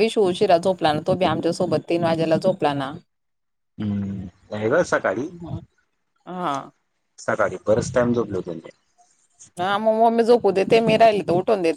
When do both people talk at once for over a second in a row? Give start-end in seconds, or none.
none